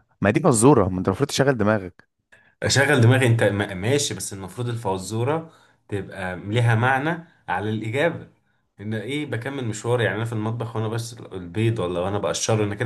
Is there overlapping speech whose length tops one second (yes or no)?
no